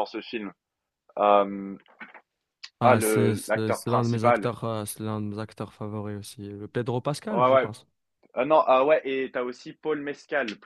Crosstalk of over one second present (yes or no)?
yes